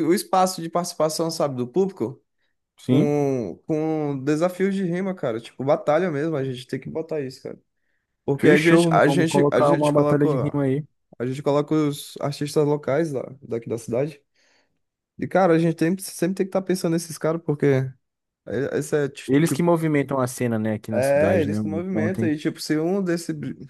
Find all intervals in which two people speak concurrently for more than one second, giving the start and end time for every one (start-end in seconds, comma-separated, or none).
8.4-10.5, 20.9-22.4